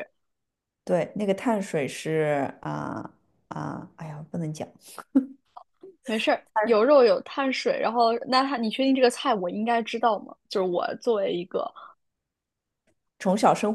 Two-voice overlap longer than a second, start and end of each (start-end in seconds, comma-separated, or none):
none